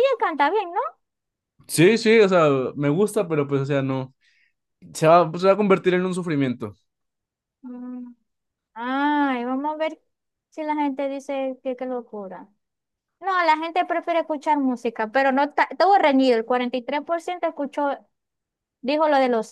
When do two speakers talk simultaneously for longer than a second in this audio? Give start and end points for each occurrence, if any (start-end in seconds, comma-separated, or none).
none